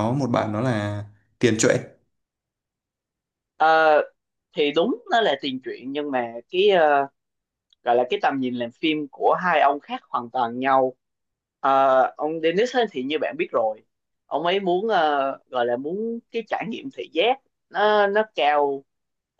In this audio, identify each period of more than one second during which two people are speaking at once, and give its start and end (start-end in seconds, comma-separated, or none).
none